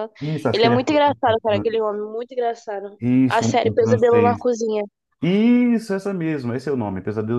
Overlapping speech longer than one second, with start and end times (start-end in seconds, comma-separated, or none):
3.0-4.5